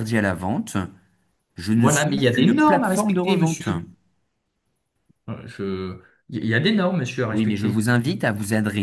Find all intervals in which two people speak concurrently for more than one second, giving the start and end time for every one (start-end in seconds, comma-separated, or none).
1.8-3.7